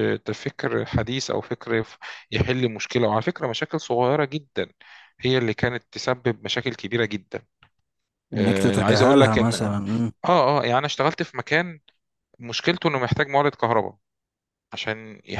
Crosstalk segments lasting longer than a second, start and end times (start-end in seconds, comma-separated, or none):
8.4-9.8